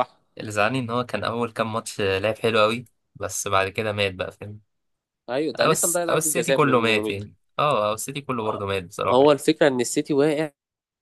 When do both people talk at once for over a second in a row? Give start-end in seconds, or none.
5.6-7.1